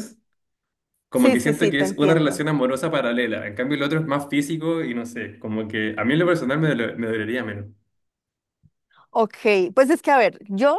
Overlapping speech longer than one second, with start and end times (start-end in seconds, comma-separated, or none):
1.2-2.4